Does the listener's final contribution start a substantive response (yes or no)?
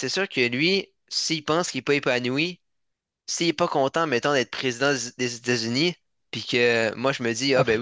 no